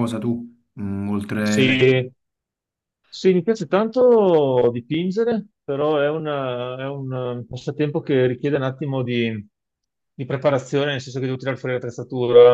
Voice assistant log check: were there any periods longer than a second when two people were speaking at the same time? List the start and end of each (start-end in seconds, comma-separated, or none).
none